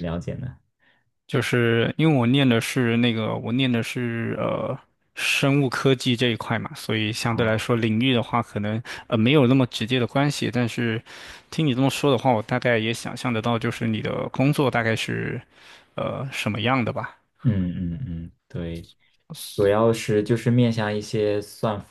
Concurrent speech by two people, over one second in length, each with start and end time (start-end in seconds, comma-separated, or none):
none